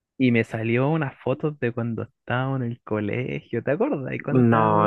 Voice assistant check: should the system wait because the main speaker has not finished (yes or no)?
no